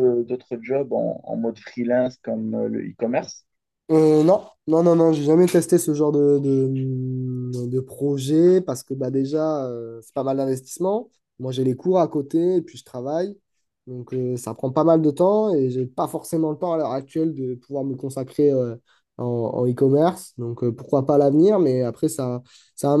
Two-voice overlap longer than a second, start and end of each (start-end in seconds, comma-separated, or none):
none